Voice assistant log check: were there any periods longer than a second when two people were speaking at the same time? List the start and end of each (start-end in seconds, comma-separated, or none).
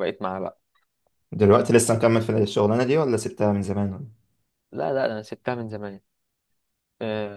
none